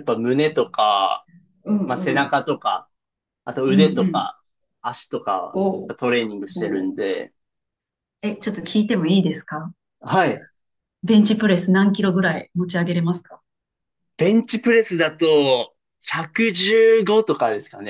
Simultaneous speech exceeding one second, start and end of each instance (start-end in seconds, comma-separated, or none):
none